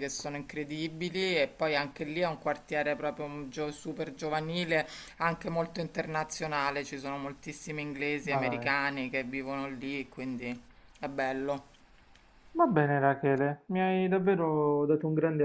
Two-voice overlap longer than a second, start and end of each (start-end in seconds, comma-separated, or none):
none